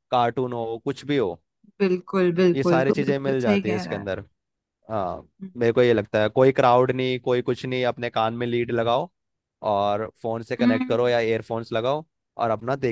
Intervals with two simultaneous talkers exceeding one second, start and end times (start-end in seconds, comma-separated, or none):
2.5-4.1